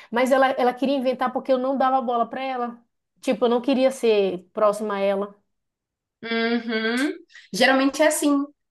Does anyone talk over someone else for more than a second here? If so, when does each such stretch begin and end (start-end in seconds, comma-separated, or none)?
none